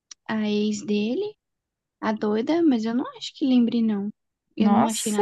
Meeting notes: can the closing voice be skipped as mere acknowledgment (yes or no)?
no